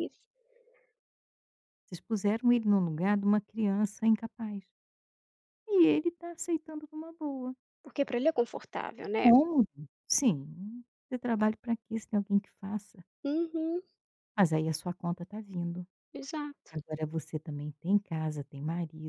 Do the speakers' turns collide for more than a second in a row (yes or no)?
no